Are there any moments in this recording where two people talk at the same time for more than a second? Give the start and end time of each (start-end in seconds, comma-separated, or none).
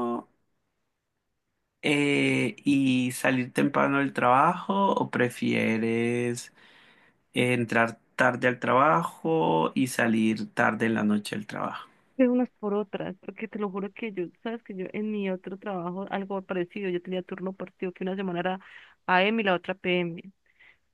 none